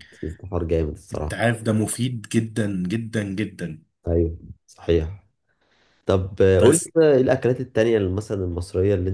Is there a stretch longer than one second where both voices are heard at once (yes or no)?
no